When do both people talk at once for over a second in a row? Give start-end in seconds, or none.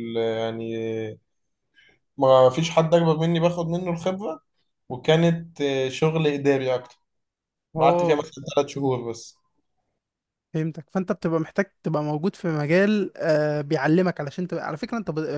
none